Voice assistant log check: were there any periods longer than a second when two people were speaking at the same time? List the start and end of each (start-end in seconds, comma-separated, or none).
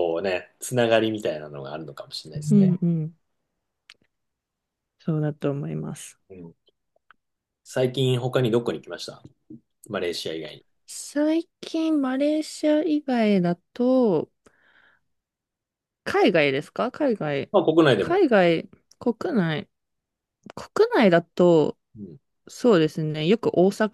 none